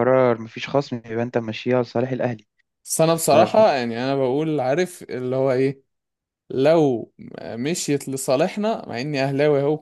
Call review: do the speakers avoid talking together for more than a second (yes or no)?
yes